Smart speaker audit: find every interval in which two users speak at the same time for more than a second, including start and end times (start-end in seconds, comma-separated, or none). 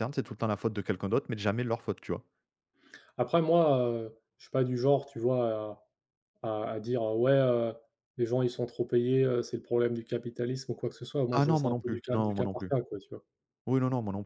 11.3-12.7